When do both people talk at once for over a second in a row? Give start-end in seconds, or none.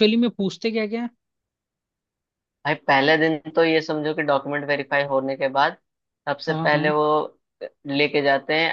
none